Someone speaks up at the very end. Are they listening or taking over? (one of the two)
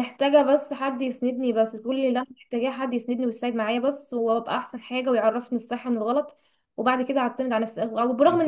listening